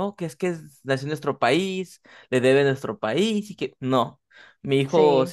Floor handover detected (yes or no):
no